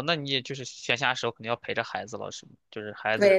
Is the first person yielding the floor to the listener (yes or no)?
yes